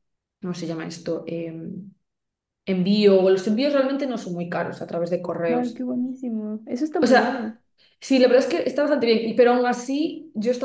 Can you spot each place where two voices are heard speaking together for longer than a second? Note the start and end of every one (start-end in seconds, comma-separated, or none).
none